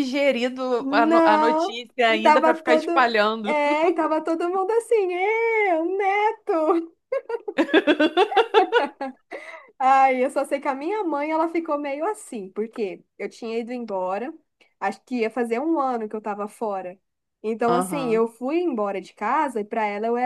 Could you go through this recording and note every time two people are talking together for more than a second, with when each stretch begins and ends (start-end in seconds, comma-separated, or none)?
0.8-3.6